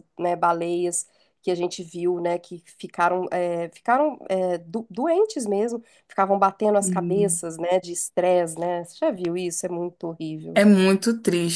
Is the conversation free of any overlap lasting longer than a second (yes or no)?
yes